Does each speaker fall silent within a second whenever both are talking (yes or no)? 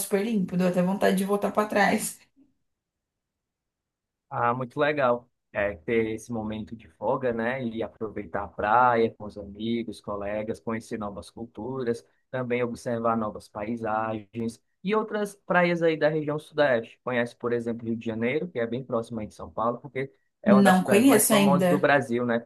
no